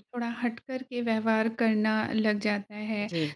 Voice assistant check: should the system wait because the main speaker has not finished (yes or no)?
yes